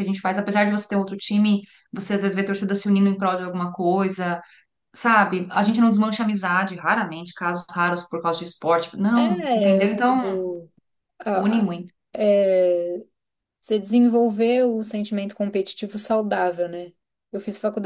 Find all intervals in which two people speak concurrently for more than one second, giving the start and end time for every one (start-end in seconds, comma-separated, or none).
9.2-10.4